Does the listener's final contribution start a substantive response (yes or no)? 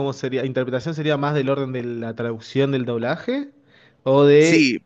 yes